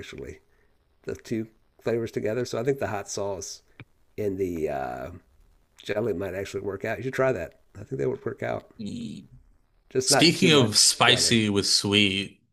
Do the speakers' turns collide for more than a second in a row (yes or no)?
yes